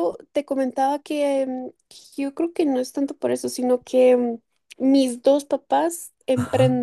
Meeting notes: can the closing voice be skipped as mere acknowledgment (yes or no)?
no